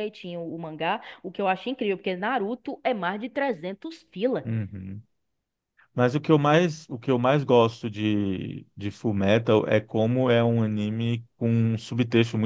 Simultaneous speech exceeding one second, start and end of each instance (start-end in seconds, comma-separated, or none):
none